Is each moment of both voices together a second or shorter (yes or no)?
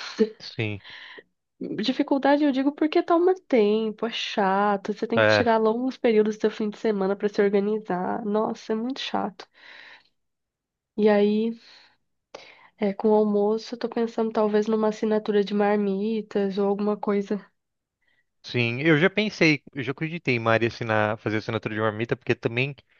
yes